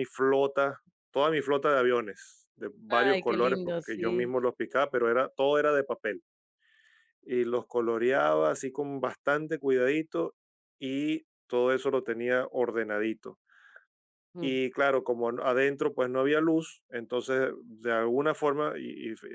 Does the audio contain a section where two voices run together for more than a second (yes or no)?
yes